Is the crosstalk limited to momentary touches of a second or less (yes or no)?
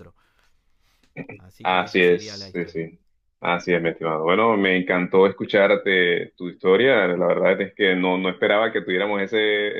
no